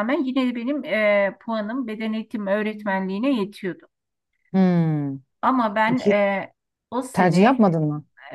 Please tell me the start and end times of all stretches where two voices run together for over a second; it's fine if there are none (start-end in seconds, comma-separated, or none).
none